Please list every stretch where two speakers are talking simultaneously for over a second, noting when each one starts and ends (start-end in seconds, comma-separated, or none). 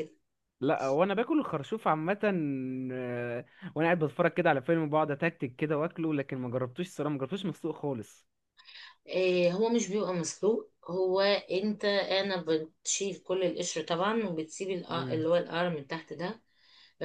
none